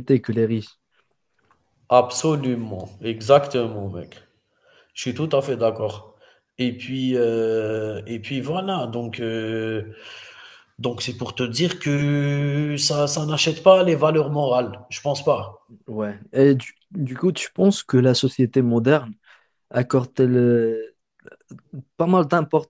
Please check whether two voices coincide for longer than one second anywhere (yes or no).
no